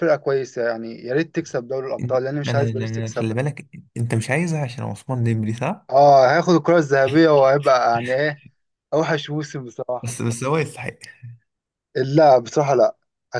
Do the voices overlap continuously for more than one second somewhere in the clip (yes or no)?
yes